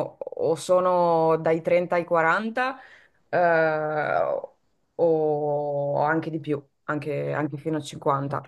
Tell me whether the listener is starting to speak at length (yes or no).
yes